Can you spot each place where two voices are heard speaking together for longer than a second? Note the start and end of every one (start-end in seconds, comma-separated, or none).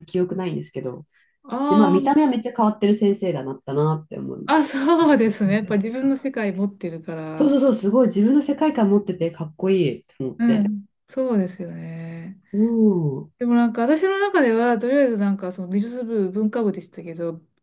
none